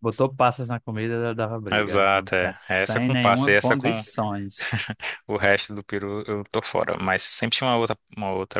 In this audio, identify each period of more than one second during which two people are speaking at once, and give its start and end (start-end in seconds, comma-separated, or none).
1.7-4.0